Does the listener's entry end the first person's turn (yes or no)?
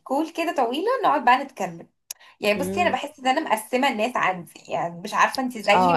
yes